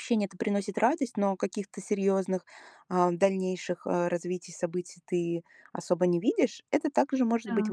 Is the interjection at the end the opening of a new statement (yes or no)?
no